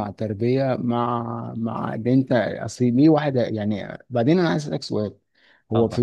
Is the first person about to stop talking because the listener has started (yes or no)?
no